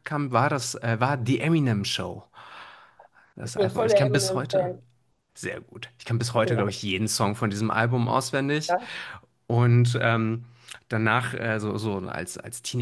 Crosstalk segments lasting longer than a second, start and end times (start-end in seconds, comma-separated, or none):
3.4-4.7